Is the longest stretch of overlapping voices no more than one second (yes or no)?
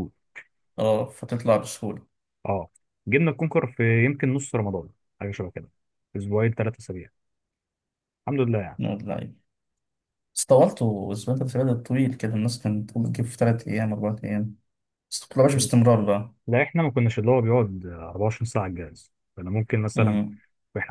yes